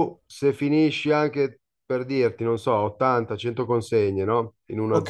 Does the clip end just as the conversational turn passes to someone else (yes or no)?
no